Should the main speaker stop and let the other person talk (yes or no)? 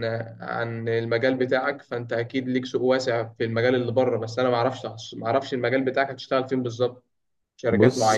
no